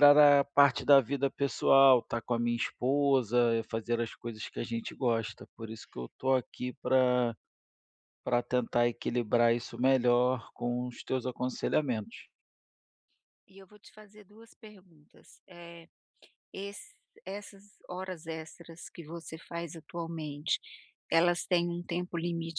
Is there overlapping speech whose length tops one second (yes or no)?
no